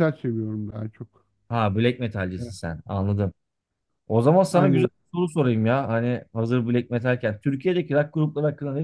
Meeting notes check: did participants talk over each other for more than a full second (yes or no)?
no